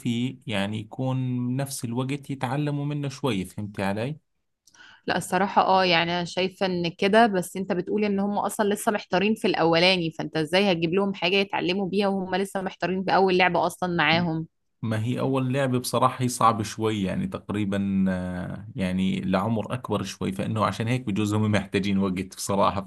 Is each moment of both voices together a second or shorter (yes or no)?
yes